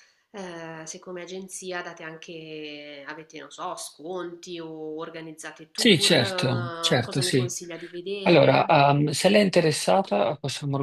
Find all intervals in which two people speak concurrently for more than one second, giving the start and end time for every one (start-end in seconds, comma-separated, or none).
5.8-7.5